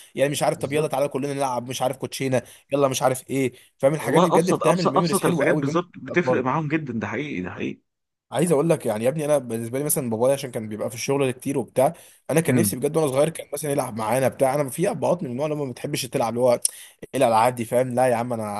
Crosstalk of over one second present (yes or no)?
yes